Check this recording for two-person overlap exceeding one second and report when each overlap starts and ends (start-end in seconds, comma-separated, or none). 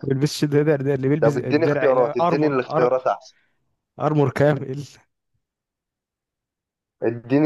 1.2-3.0